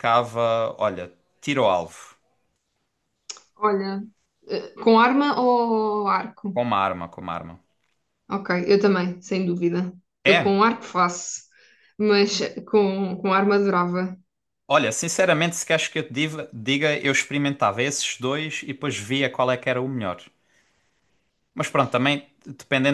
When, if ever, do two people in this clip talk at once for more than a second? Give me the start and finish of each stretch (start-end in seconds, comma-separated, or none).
none